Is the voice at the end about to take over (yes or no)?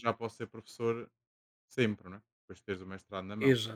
yes